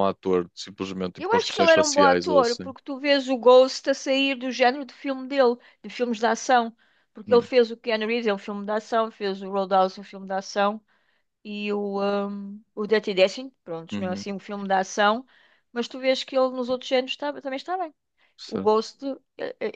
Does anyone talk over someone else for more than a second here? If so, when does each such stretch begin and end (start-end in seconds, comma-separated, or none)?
1.2-2.7